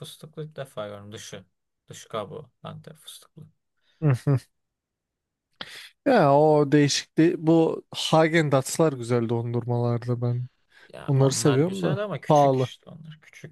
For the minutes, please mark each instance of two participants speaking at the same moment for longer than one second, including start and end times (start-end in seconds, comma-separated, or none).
11.1-12.7